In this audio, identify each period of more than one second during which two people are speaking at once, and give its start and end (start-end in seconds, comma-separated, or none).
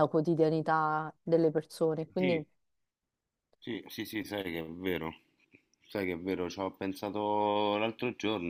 none